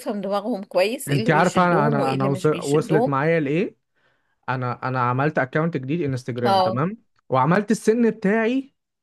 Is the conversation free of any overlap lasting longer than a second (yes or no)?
no